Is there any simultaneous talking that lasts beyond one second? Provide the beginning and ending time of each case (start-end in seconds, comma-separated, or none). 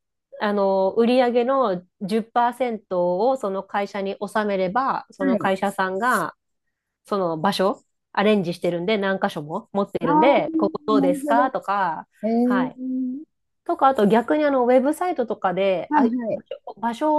10.0-11.5